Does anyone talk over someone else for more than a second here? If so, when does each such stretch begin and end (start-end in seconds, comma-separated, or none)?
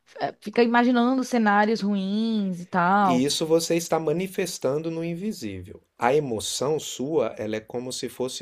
none